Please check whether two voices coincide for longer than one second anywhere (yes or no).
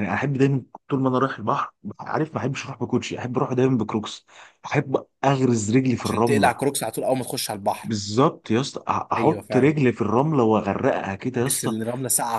no